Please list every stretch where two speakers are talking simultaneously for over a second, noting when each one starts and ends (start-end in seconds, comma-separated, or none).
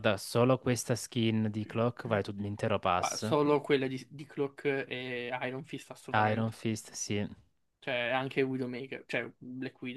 none